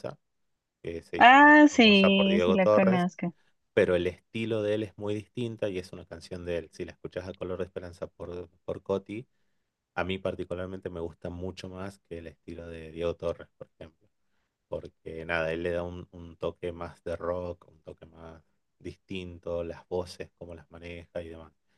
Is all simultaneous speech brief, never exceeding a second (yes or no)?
no